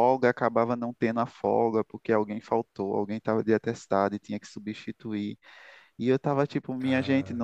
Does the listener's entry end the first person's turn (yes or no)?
no